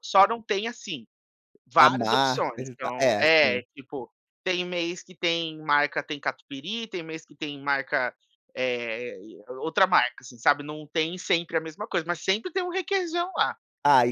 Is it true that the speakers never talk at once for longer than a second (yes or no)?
no